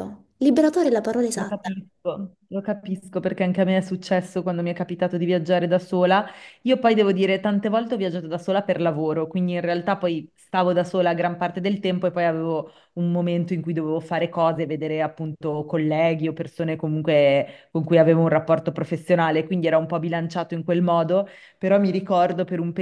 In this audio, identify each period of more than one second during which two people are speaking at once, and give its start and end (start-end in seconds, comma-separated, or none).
none